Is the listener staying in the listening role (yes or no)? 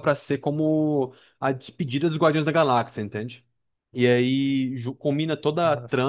yes